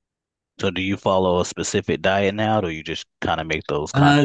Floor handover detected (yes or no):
yes